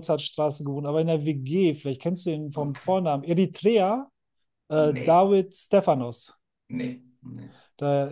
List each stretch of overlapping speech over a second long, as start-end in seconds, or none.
none